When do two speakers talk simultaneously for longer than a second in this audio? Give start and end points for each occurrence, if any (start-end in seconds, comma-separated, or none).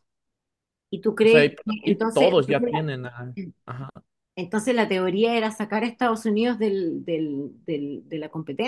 1.2-2.8